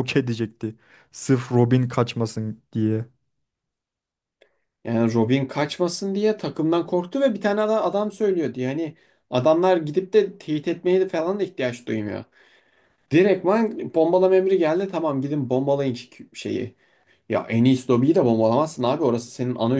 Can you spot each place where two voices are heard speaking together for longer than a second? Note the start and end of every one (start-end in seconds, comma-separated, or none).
none